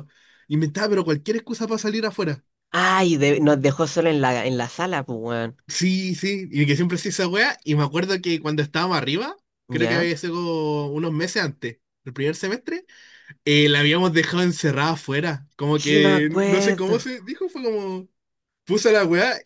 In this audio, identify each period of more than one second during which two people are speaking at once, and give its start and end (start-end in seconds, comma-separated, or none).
15.7-17.1